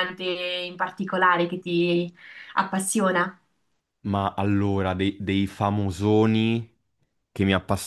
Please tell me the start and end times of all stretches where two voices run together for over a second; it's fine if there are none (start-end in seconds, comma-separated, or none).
none